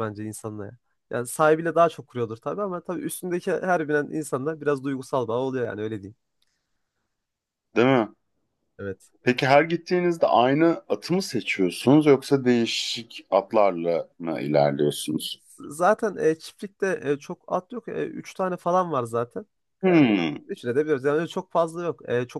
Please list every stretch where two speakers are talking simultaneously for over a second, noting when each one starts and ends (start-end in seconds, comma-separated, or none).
none